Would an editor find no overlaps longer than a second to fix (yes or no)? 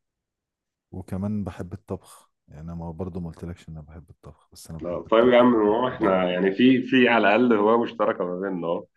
no